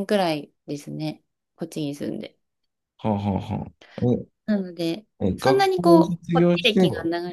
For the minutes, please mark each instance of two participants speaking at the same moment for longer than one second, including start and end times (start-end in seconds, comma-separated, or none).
5.2-6.8